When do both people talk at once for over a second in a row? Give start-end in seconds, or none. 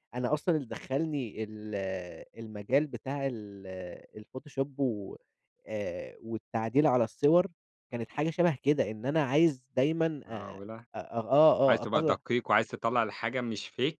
none